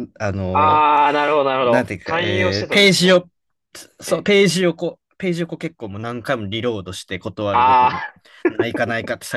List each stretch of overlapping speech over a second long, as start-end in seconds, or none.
1.6-3.2